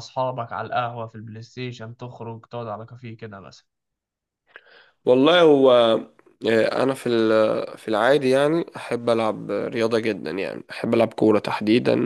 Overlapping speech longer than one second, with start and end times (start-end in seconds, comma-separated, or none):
none